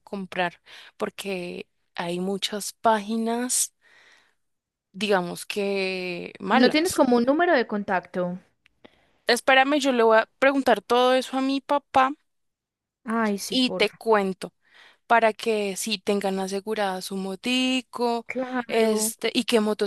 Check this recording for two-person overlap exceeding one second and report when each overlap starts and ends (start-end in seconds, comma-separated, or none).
none